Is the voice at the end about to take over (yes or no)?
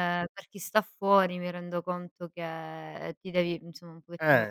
no